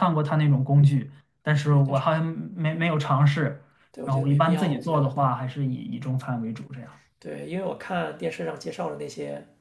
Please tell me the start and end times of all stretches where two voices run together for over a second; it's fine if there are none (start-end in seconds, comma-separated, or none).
4.0-5.2